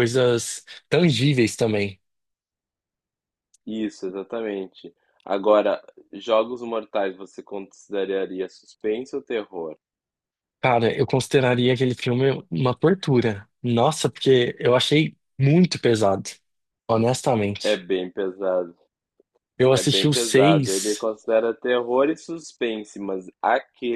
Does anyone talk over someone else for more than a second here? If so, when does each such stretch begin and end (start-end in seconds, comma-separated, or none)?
19.7-21.1